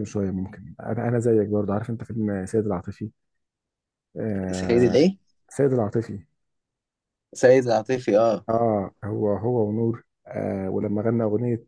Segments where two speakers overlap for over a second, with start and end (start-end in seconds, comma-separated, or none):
none